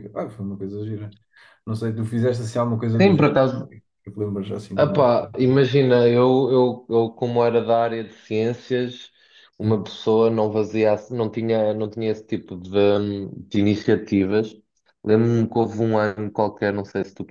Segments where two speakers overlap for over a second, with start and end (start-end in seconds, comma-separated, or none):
none